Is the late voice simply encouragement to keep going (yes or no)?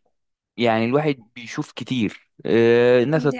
yes